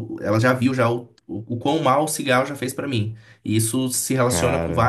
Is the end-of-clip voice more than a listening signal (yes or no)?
no